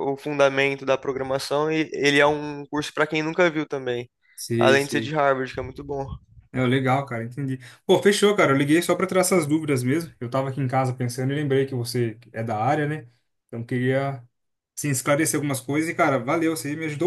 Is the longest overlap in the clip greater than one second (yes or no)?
no